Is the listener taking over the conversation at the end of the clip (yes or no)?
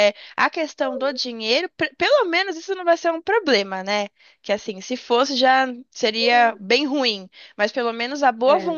no